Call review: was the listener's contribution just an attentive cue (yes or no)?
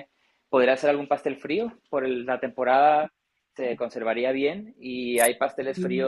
yes